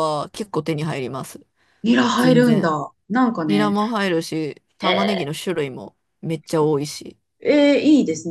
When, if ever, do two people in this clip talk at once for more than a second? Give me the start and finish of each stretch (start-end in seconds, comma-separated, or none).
none